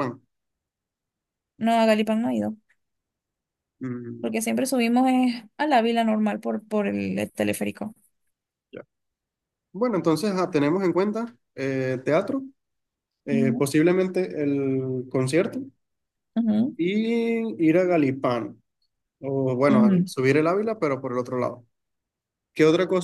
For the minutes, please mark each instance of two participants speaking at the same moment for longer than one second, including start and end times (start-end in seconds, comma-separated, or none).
none